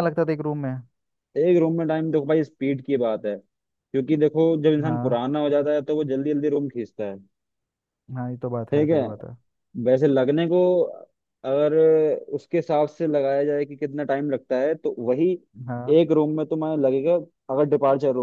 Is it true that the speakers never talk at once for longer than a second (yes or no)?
yes